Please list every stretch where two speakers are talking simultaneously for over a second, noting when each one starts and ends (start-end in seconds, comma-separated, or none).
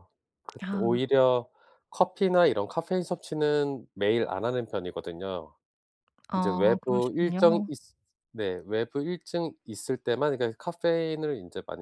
6.3-7.7